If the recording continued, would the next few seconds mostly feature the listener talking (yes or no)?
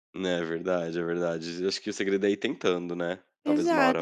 yes